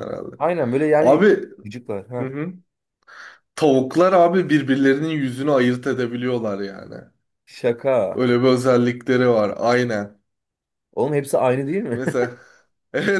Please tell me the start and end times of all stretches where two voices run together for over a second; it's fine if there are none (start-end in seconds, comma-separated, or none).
none